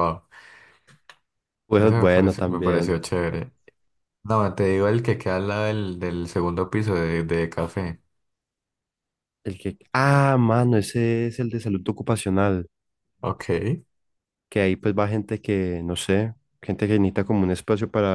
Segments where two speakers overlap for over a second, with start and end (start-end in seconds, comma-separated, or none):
1.8-3.0